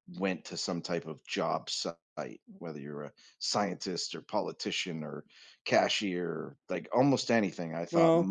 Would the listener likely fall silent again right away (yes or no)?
yes